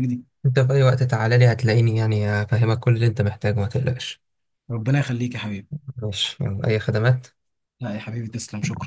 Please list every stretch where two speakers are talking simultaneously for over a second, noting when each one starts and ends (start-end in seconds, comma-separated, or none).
none